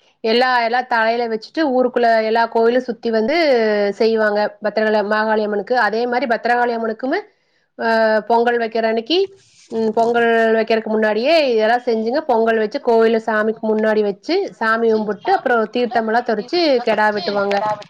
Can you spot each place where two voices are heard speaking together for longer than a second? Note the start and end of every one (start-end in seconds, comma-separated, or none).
11.9-16.0